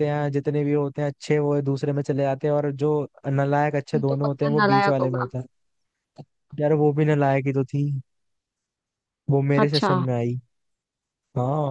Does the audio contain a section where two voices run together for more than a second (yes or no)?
yes